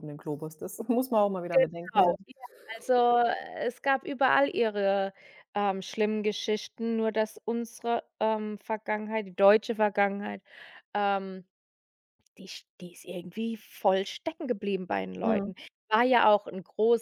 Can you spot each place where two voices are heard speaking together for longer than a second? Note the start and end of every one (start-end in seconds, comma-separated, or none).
none